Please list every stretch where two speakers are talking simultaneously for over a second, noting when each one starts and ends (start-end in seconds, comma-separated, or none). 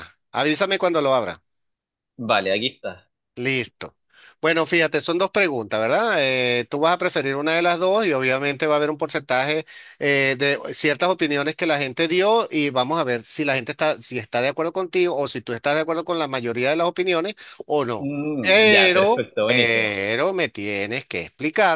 18.0-20.0